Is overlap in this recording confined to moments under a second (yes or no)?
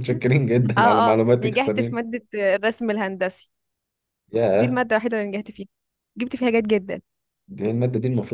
no